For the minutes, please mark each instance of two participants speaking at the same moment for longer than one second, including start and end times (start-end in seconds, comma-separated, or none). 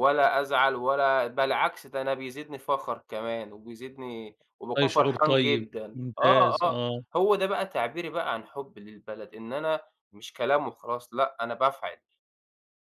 4.8-6.8